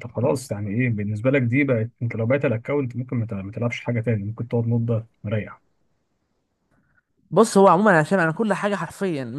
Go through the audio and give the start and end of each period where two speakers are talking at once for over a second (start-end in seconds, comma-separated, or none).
none